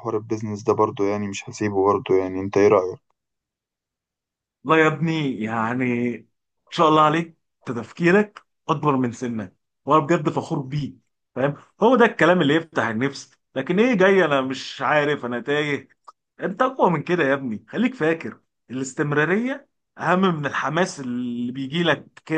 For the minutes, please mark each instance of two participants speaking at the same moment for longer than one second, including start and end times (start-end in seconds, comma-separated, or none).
none